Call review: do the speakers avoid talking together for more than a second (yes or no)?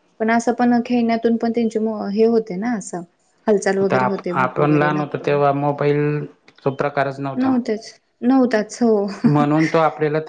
no